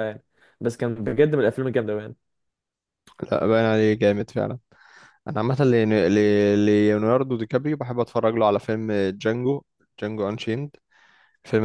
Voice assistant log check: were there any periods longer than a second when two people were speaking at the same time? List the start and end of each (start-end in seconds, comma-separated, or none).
none